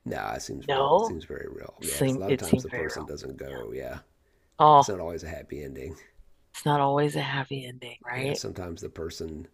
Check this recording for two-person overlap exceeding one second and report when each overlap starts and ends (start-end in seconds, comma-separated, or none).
1.8-3.1